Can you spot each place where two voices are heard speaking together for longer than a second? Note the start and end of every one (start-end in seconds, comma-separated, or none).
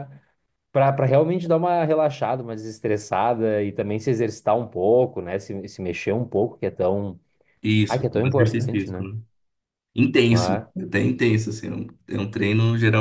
7.9-9.1